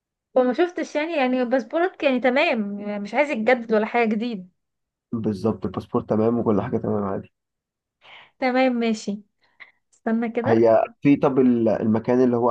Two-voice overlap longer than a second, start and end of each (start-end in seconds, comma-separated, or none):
none